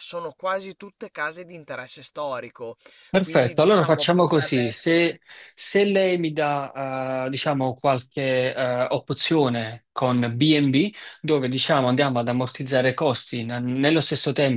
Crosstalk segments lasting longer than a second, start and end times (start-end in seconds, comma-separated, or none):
3.2-5.1